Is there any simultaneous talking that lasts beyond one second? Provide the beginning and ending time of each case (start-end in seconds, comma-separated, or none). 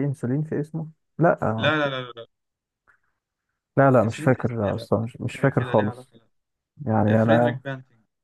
4.0-6.1